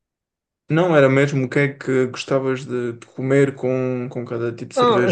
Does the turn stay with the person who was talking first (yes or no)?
no